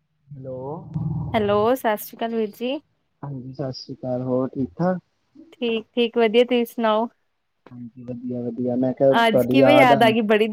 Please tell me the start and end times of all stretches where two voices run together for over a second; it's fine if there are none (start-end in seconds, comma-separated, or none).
none